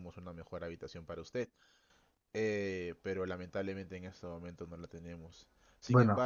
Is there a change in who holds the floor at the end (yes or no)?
no